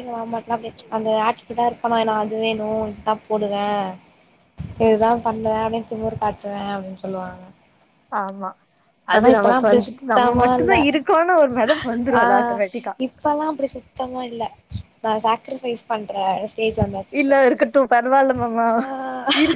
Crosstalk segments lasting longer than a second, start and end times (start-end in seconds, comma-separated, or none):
9.2-10.8